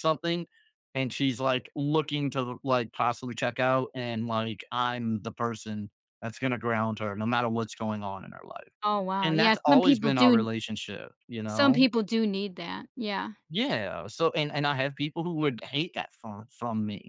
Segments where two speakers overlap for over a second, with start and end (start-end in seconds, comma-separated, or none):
9.2-10.5